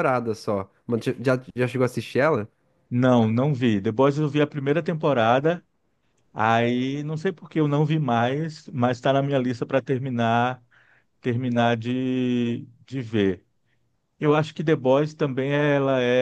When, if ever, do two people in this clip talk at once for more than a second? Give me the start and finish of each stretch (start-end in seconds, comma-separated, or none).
none